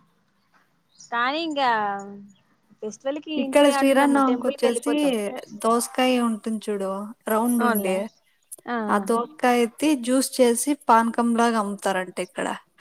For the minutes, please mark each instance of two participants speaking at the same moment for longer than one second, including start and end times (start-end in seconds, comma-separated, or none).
3.4-4.9